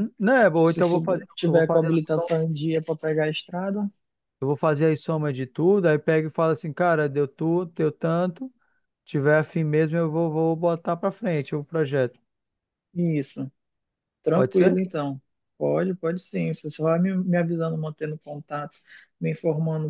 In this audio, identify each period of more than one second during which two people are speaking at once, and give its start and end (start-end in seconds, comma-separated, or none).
0.7-2.3